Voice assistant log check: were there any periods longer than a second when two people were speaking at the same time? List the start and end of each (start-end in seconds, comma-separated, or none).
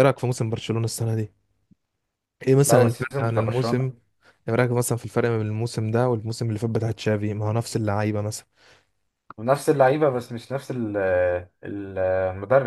2.6-3.9